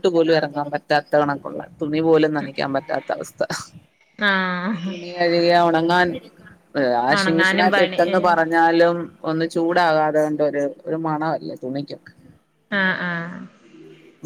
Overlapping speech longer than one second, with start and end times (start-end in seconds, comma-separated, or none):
7.2-8.6